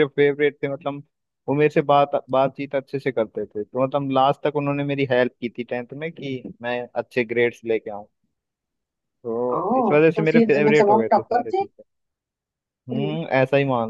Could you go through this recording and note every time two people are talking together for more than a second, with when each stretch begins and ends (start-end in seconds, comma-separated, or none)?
10.2-11.7